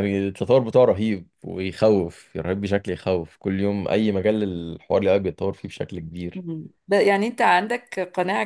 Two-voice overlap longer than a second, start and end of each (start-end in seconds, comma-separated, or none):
none